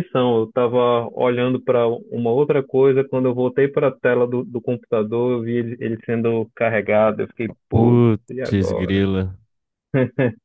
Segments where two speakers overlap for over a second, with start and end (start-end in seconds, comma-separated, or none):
7.7-9.0